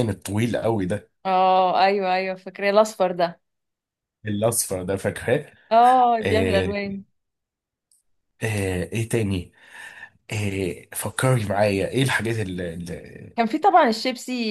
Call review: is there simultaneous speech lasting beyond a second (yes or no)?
no